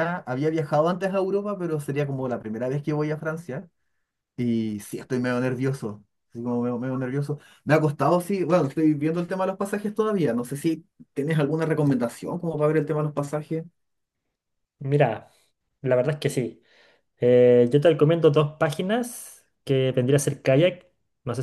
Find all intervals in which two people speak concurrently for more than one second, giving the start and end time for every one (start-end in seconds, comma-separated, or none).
none